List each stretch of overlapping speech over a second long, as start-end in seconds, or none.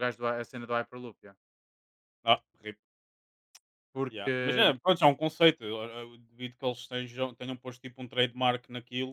none